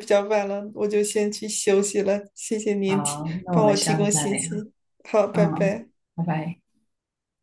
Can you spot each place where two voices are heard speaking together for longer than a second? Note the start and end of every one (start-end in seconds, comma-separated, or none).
2.9-4.4